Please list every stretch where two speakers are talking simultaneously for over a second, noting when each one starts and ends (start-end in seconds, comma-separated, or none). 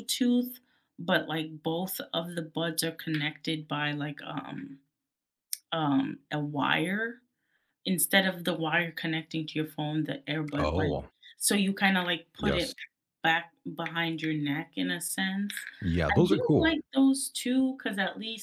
none